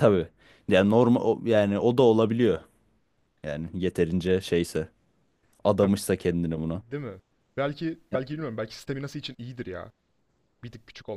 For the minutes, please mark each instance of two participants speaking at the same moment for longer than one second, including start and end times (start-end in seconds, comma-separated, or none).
none